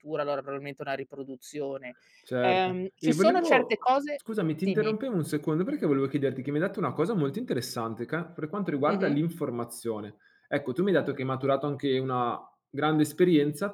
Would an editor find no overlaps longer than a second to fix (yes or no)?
no